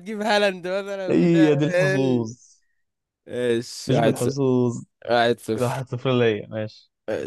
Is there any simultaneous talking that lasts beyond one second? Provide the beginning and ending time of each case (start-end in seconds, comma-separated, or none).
1.1-2.3